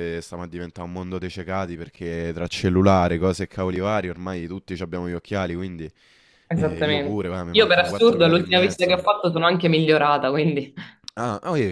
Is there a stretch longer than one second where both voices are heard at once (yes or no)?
yes